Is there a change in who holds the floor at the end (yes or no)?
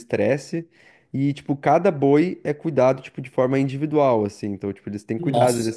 no